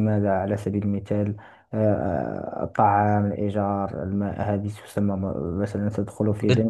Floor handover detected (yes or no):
no